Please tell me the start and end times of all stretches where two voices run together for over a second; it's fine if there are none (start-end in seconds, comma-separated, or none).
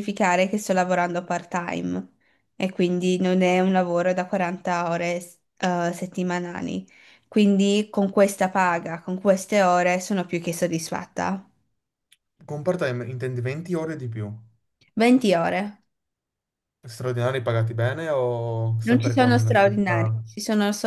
18.8-20.2